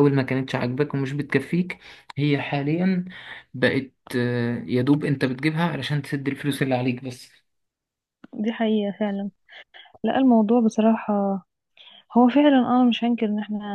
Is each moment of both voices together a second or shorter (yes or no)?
yes